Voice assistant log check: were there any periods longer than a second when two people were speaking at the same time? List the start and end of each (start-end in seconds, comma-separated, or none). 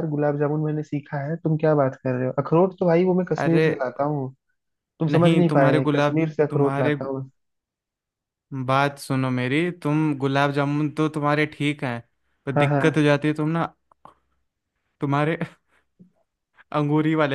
5.1-7.1